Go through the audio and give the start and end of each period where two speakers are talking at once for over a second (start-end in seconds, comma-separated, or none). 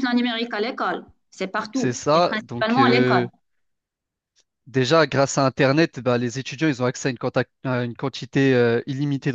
1.7-3.2